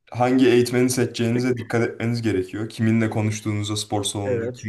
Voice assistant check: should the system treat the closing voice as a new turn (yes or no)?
no